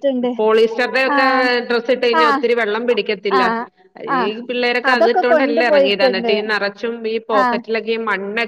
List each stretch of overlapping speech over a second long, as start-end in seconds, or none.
4.9-6.3